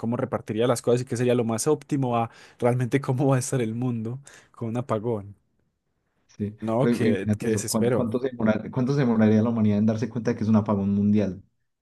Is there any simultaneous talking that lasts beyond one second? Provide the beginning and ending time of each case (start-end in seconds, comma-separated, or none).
6.6-8.1